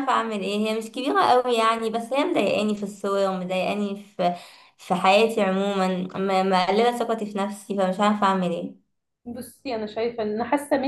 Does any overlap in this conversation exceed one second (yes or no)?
no